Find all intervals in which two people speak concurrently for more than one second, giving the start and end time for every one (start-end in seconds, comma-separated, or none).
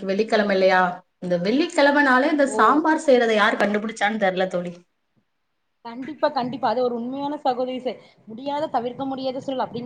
none